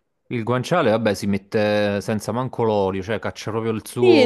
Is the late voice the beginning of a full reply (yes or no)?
yes